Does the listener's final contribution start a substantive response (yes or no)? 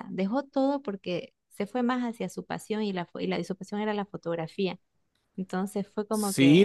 yes